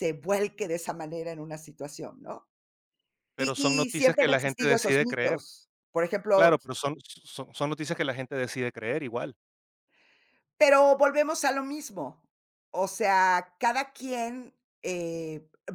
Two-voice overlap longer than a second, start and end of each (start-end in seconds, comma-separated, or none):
3.4-5.4